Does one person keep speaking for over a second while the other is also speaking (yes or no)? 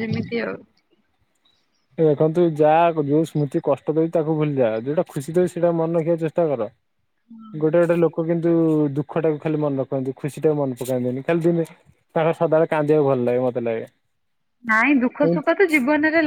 no